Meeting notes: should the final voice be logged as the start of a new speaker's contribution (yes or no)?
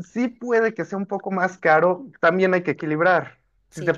no